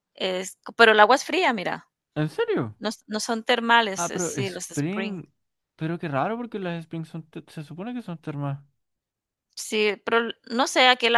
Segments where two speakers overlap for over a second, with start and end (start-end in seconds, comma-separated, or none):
3.9-5.2